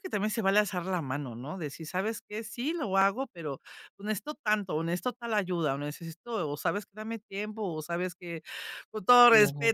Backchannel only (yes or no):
yes